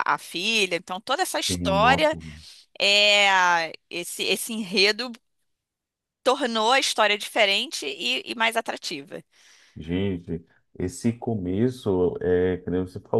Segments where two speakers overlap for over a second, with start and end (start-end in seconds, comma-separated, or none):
none